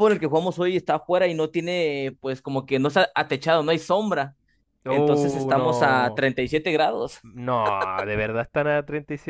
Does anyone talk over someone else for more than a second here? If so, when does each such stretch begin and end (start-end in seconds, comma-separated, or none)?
4.9-6.2